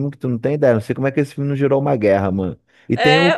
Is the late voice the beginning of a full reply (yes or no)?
no